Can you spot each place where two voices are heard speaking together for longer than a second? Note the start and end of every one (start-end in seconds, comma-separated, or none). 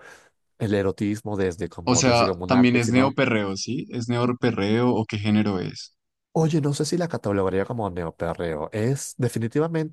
1.8-3.2